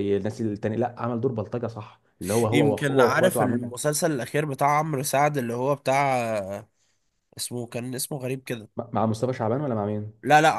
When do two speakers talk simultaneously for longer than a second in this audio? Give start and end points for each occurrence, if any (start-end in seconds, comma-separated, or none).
2.5-3.8